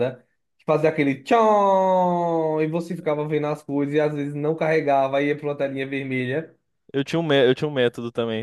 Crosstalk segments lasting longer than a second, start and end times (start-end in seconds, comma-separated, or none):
none